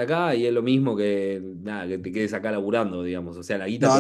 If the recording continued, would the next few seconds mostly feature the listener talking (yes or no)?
yes